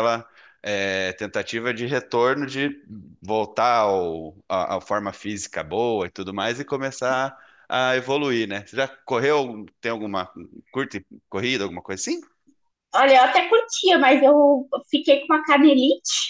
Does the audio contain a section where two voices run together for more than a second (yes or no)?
no